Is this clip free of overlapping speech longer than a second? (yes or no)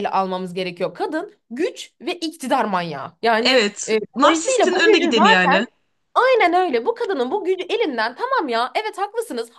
no